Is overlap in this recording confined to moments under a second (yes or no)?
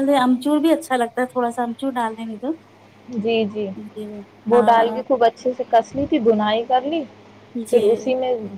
yes